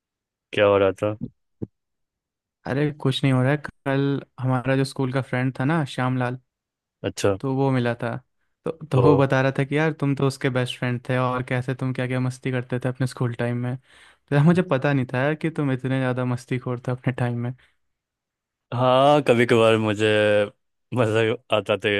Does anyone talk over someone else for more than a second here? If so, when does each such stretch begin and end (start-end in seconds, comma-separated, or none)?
none